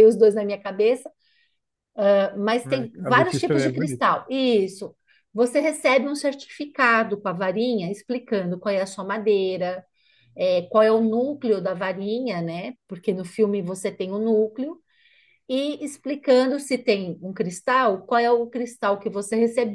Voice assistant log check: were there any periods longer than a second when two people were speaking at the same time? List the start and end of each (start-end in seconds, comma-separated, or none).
2.6-4.1